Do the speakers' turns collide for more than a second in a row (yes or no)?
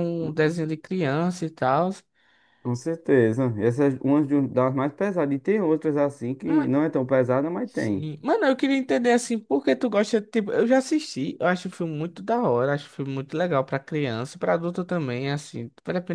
no